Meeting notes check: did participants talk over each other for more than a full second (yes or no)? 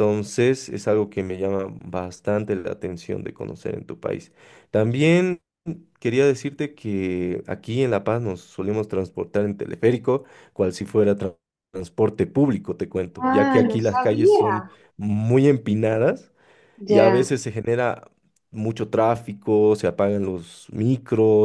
yes